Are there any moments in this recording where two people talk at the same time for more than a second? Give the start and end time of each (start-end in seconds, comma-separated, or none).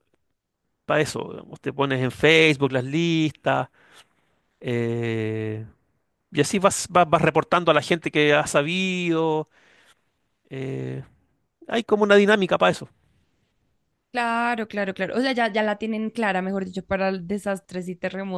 none